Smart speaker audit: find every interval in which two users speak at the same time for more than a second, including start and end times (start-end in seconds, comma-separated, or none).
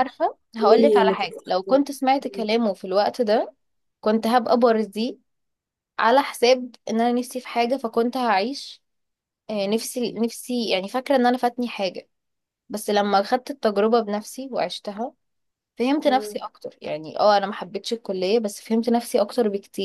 0.6-2.5